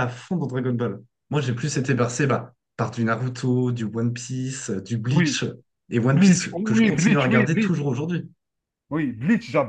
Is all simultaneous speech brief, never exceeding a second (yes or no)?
no